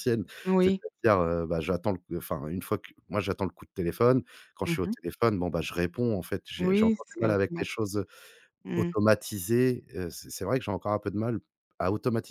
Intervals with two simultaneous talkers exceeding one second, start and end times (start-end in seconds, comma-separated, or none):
6.6-7.9